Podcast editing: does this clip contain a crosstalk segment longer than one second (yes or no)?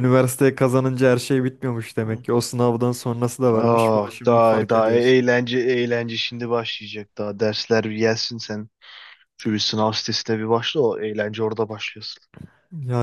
yes